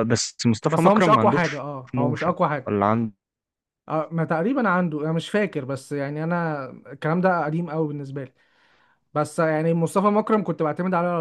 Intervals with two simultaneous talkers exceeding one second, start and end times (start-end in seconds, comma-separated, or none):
0.7-2.7